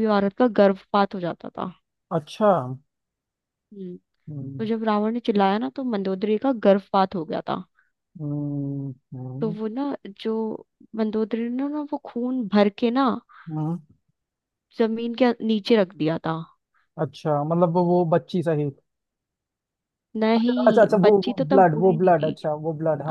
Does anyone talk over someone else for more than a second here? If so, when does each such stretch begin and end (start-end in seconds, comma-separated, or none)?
20.4-22.5